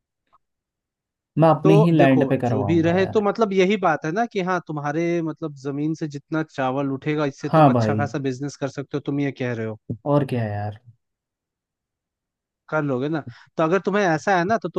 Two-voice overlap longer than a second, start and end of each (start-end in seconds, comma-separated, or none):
1.6-3.2